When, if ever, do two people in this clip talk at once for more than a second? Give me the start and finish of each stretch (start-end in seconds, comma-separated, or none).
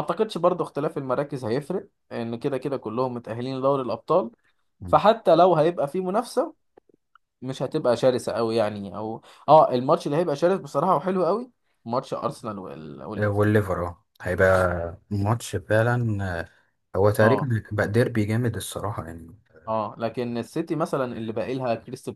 none